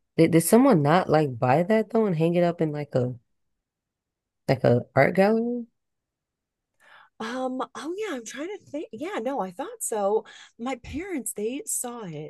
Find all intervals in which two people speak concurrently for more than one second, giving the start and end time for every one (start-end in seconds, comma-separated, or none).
none